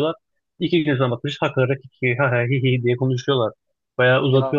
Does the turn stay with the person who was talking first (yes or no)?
yes